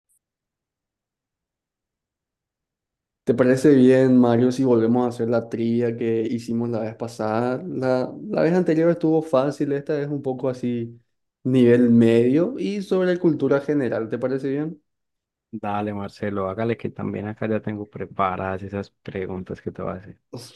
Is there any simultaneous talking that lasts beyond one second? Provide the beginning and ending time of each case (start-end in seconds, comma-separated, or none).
none